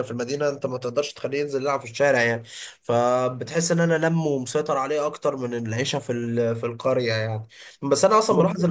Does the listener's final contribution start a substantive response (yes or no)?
no